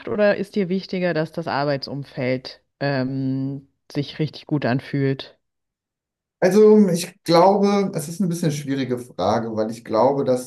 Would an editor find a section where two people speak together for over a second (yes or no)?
no